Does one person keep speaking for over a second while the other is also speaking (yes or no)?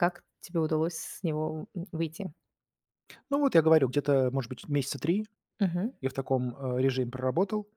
no